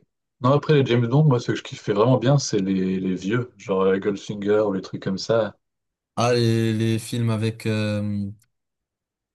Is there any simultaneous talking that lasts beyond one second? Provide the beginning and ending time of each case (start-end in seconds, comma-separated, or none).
none